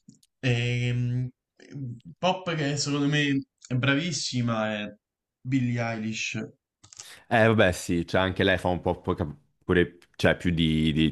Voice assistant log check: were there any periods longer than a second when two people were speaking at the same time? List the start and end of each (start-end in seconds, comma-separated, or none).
none